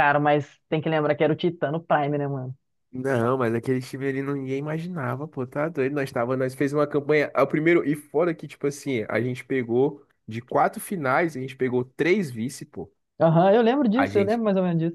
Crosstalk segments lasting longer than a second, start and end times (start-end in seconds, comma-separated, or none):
none